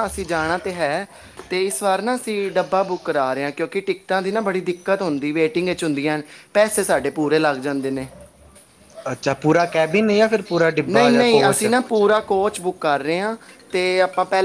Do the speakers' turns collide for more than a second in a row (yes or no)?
yes